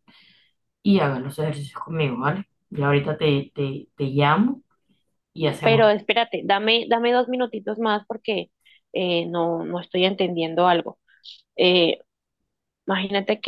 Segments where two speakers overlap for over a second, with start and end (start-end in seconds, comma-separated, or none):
none